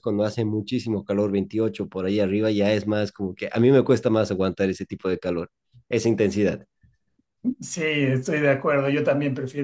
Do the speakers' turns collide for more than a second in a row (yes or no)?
no